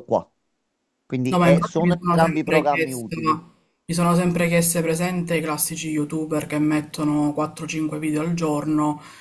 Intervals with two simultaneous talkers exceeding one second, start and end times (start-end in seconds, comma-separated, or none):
1.3-3.1